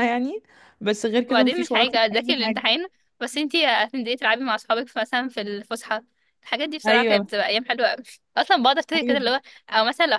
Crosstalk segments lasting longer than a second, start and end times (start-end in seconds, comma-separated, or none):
1.3-2.7